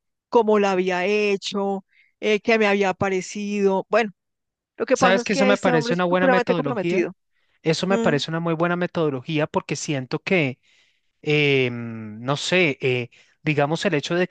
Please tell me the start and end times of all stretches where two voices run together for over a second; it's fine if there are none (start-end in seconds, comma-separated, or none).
4.9-7.1